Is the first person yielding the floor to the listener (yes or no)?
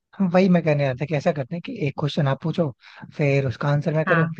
no